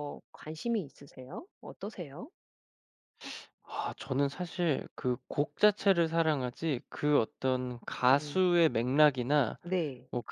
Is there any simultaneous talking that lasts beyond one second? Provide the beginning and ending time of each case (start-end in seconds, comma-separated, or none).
none